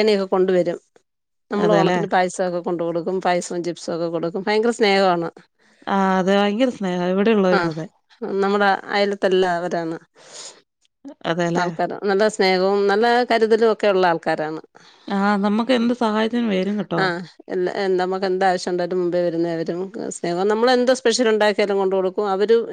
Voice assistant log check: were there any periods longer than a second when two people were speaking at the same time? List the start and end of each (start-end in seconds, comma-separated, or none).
none